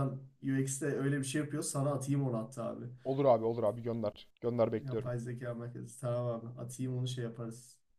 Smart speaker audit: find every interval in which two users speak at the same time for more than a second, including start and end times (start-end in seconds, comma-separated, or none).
none